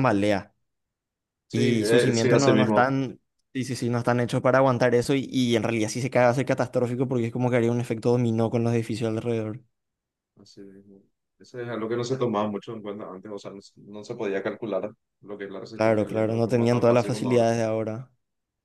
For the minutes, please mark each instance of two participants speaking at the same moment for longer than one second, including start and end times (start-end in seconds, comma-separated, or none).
1.5-2.9, 15.7-17.4